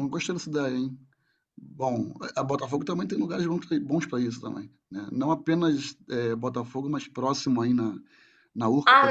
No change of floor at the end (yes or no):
no